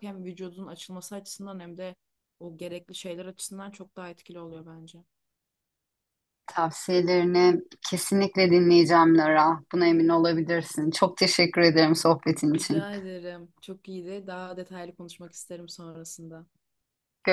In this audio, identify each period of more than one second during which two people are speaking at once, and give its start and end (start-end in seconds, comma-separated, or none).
none